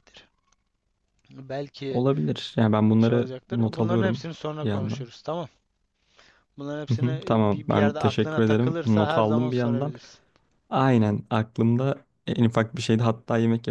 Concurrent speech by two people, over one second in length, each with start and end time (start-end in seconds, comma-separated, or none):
3.0-5.1, 6.9-9.9